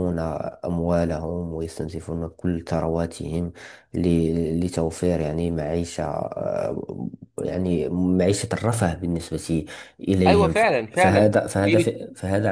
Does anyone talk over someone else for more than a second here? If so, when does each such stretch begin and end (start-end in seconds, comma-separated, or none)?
10.3-11.9